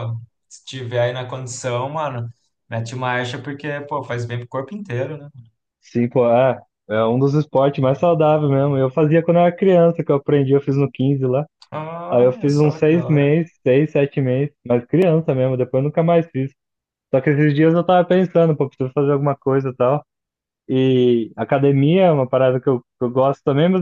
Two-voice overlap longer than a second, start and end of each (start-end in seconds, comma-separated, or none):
12.1-13.3